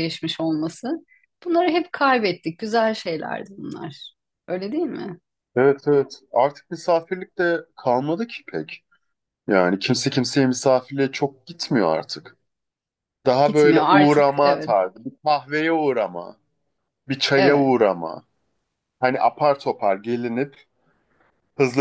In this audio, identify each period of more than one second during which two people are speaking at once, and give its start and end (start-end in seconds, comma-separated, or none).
13.4-14.7